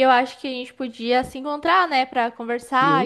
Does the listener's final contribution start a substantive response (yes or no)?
yes